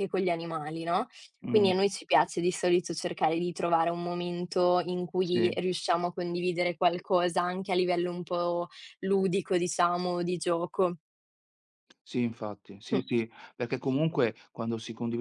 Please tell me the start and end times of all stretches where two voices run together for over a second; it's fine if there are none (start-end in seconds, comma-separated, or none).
none